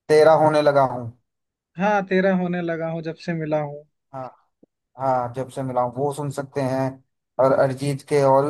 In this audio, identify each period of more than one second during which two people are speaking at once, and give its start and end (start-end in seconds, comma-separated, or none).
none